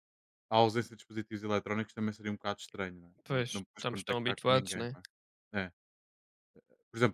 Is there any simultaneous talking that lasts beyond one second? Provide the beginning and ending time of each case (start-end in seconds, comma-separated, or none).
3.3-5.0